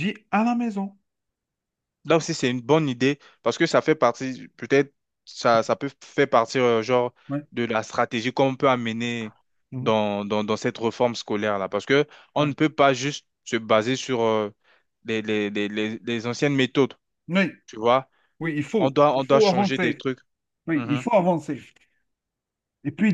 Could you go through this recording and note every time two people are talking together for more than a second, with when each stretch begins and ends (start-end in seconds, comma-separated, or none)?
18.8-20.0